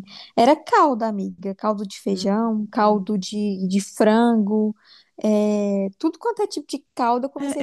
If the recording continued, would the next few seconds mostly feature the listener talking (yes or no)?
yes